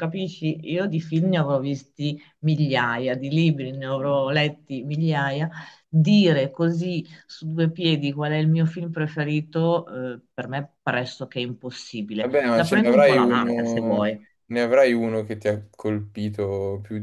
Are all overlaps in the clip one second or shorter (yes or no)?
no